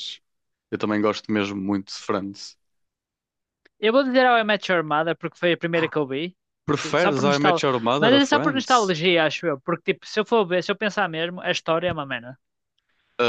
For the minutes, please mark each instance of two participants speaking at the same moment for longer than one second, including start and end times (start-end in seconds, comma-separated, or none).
6.8-8.9